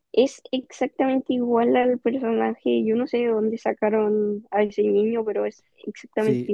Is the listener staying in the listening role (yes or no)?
no